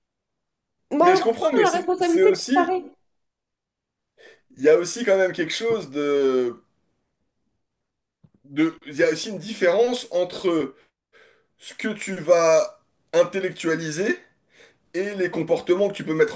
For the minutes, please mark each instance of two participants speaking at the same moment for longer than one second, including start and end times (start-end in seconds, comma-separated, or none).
1.0-2.7